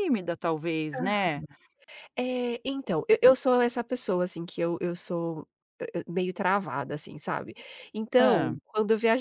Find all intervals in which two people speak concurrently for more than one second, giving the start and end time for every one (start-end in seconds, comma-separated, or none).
none